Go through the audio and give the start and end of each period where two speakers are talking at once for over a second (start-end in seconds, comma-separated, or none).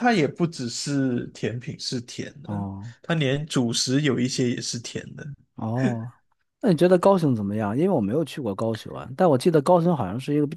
none